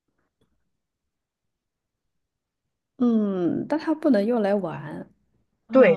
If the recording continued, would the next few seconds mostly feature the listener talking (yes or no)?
yes